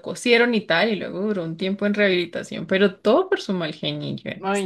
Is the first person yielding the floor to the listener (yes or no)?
yes